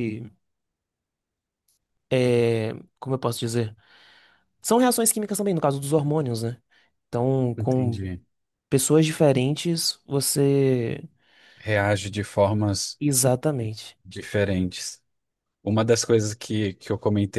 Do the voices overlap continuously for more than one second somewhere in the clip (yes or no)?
no